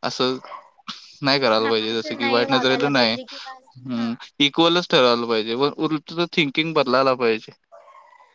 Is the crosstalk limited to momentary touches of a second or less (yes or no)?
no